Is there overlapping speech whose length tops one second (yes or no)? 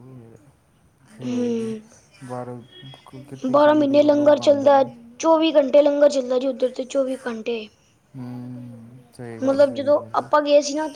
yes